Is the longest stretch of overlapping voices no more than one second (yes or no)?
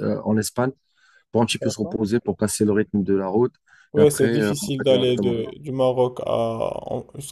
no